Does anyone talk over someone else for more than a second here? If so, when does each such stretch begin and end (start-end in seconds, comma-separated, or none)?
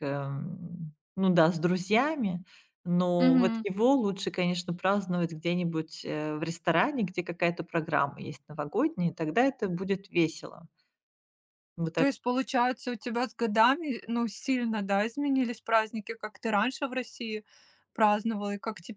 none